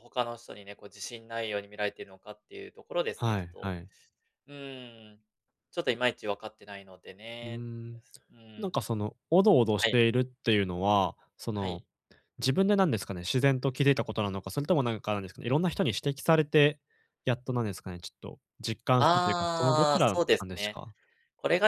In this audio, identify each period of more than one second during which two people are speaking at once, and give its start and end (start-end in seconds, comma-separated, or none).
19.0-20.8